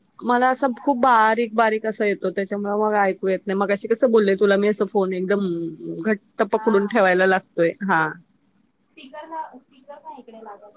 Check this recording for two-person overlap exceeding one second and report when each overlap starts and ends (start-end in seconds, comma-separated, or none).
none